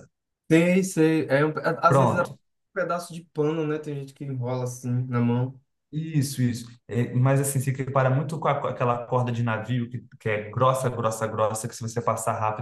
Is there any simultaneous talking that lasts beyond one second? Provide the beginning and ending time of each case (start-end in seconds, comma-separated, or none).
none